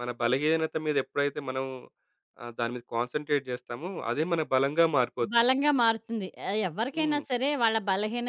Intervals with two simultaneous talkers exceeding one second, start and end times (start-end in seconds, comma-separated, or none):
none